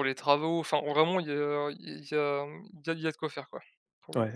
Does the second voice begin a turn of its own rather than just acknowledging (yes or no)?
yes